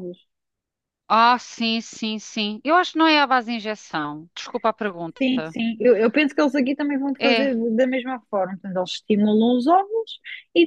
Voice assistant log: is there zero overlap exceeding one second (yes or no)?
yes